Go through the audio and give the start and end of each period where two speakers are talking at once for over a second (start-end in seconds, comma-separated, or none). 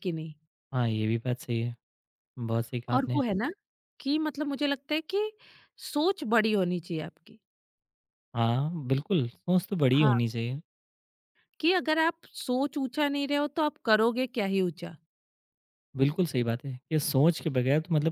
none